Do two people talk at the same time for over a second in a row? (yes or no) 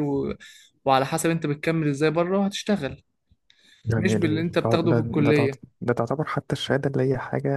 yes